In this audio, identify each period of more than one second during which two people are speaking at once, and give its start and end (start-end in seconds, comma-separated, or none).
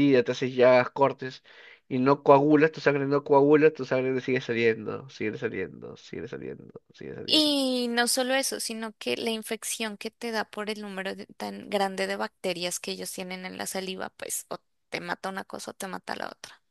none